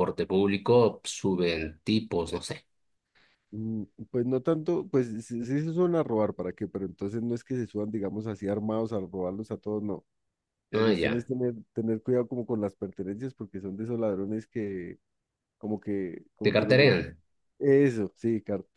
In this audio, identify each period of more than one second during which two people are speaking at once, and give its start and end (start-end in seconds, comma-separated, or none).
none